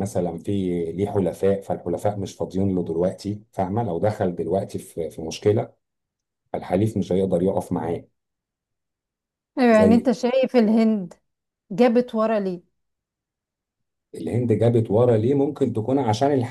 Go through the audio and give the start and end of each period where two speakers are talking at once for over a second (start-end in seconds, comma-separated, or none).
none